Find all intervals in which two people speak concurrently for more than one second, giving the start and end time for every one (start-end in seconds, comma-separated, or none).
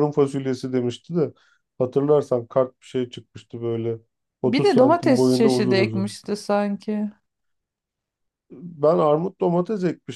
4.5-6.2